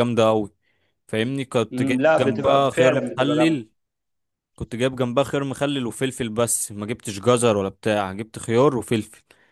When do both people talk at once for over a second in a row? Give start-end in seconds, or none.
1.7-3.6